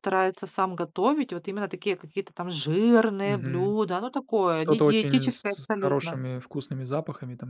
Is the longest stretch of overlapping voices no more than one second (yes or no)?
no